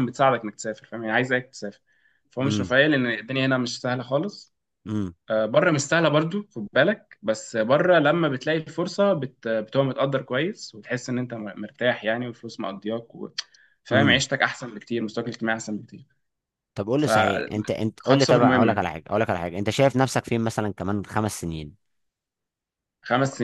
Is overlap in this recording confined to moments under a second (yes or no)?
no